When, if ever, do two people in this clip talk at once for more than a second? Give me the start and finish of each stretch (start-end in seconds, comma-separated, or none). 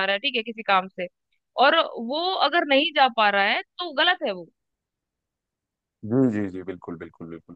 none